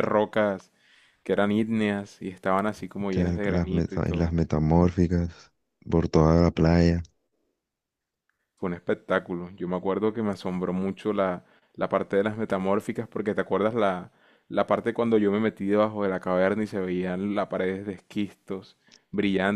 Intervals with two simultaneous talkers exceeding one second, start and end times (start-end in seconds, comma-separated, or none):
3.1-4.4